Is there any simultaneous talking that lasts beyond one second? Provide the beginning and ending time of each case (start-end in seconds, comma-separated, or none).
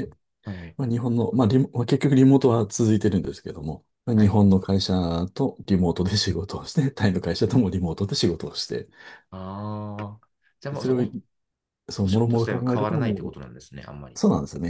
12.0-13.4